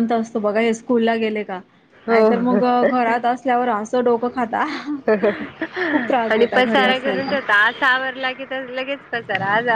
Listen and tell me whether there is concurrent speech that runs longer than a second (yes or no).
yes